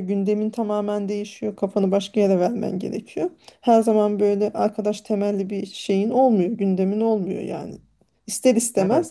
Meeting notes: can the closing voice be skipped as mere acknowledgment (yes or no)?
yes